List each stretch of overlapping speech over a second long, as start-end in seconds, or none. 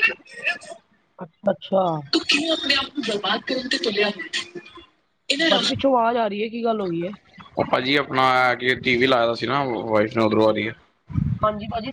none